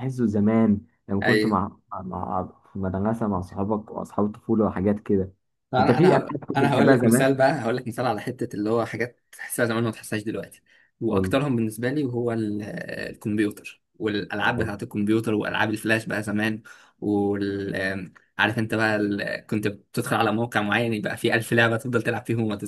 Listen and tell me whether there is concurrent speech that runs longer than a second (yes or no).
yes